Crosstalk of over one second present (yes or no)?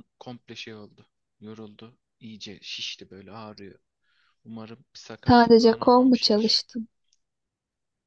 yes